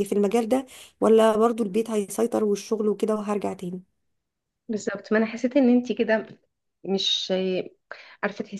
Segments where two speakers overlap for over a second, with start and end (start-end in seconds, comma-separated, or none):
none